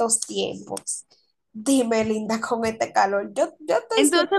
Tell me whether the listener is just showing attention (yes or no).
no